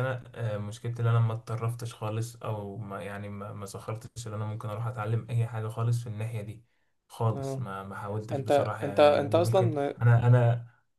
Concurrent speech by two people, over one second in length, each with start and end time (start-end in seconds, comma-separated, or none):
8.3-9.9